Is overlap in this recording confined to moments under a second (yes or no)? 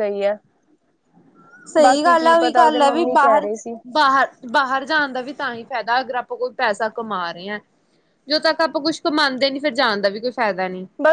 no